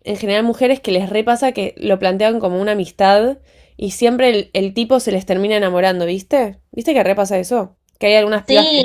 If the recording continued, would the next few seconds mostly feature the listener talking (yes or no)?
yes